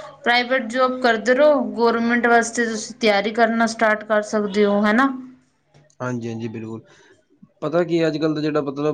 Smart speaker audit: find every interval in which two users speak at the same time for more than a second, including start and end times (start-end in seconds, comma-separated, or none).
none